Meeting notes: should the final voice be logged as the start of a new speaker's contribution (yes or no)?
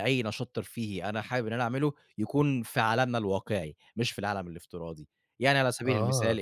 no